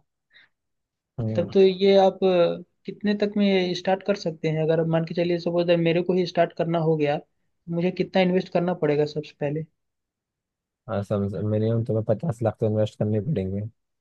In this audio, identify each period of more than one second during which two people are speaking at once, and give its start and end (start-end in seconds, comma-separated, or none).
none